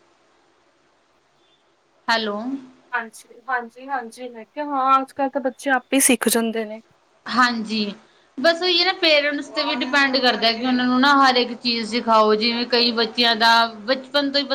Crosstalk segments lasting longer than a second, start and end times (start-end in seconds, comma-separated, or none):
none